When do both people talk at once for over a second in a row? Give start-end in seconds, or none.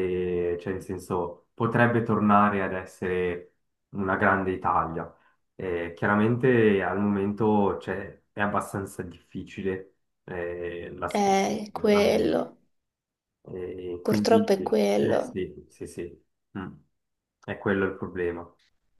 11.1-12.4, 14.0-15.3